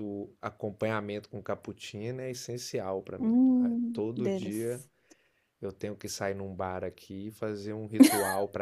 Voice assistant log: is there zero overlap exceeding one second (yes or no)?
no